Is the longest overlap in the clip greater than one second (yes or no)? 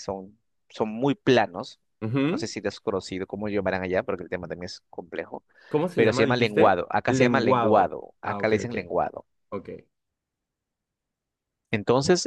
yes